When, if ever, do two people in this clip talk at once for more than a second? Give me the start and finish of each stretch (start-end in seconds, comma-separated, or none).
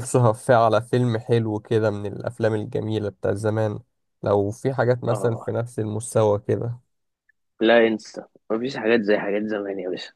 none